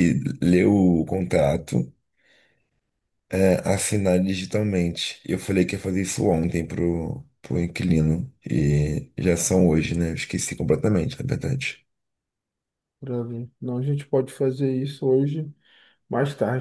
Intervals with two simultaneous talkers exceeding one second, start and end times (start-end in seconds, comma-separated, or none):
none